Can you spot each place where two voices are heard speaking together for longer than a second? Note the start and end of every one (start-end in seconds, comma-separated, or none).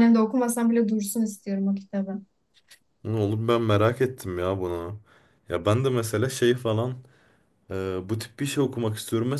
none